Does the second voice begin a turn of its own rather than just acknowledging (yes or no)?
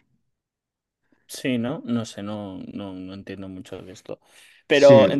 no